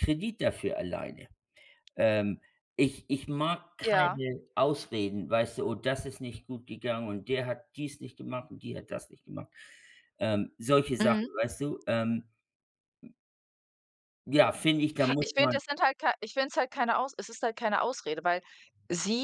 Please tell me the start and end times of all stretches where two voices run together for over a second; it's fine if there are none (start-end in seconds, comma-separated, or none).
none